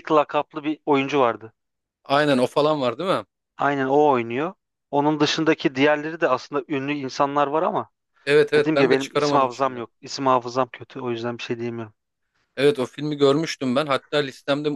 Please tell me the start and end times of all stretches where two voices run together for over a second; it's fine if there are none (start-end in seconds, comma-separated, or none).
8.6-9.8